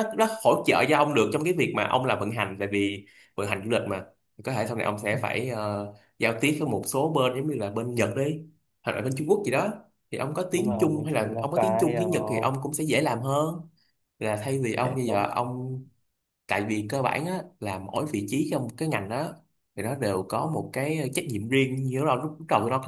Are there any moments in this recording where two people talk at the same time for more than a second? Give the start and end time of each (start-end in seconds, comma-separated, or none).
10.5-12.5